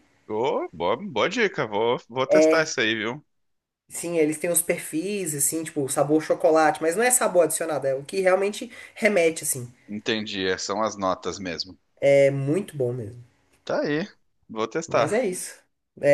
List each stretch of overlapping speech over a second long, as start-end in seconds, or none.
none